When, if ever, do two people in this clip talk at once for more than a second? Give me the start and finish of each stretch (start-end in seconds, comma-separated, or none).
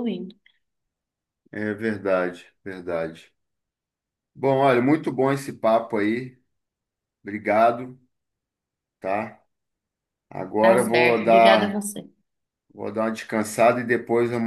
10.6-11.8